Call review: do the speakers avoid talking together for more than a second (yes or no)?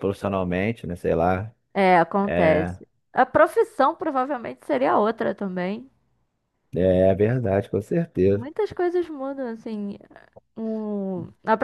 yes